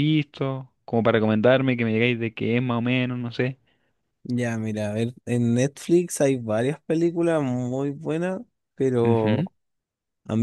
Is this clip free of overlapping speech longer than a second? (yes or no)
yes